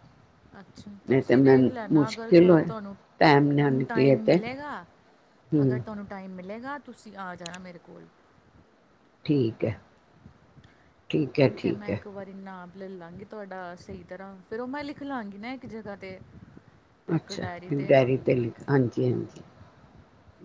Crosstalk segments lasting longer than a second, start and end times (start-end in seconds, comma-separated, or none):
0.9-2.6